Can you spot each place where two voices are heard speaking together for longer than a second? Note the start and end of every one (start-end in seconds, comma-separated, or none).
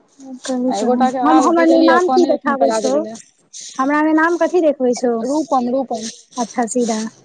0.8-2.9